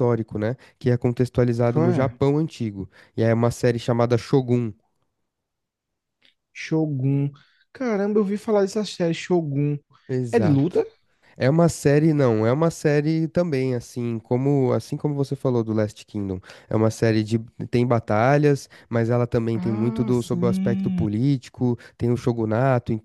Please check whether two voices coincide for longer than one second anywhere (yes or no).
yes